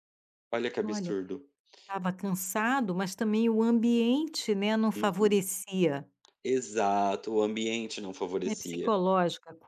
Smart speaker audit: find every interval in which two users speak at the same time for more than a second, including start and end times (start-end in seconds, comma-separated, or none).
none